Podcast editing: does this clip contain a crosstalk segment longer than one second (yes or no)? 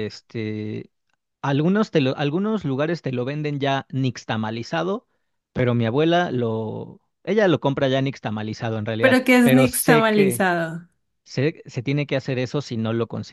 yes